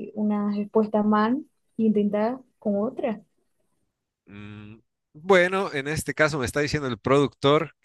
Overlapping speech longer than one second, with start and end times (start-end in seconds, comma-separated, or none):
none